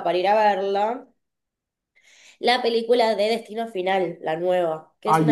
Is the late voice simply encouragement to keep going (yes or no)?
no